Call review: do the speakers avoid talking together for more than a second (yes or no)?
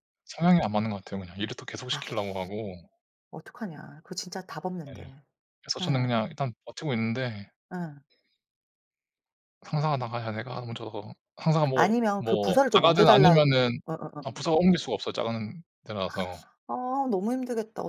no